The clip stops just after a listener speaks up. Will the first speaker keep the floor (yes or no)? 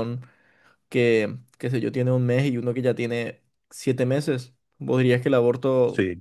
yes